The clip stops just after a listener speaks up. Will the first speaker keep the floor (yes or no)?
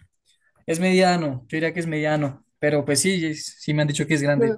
yes